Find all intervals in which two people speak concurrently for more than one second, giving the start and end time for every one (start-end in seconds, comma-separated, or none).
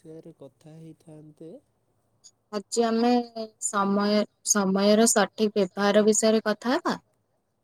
none